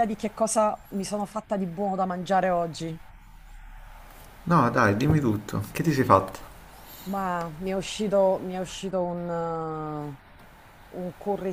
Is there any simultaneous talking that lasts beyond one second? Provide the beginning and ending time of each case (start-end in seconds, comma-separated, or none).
none